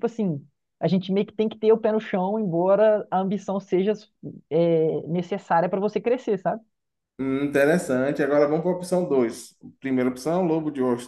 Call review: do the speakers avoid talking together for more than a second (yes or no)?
yes